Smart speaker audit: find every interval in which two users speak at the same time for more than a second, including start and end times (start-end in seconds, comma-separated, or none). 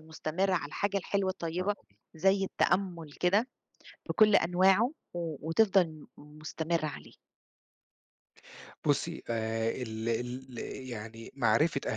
none